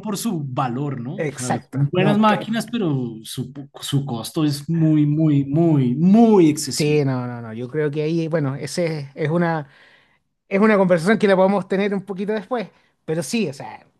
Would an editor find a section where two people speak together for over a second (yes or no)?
yes